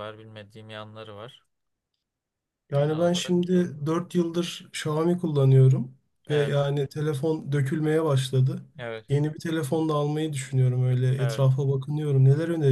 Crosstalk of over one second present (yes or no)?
yes